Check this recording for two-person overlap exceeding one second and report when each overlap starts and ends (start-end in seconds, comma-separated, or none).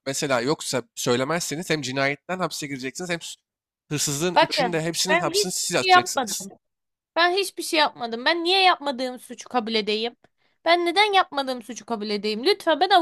4.3-6.5